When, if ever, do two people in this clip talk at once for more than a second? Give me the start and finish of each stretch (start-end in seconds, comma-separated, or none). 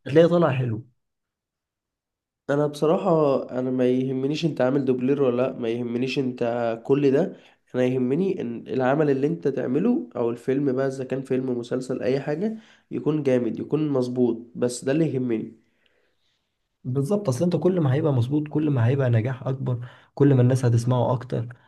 none